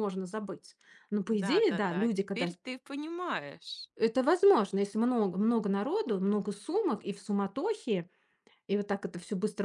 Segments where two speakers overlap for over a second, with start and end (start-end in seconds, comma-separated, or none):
1.3-2.6